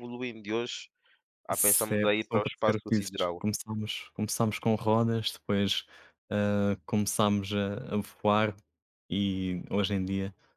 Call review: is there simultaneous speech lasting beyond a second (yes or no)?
yes